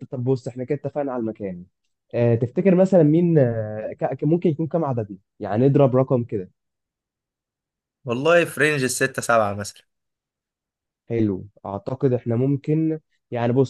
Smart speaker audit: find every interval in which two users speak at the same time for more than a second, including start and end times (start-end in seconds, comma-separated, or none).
none